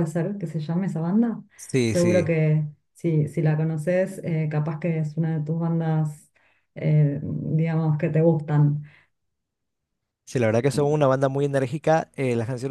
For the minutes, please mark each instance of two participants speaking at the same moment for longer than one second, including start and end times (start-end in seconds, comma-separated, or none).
none